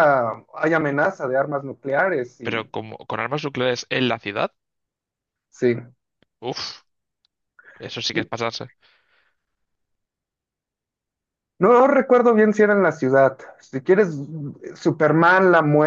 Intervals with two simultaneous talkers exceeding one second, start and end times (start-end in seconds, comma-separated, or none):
none